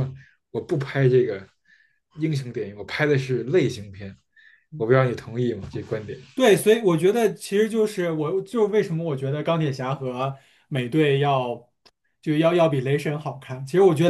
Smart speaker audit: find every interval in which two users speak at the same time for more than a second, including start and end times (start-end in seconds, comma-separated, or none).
none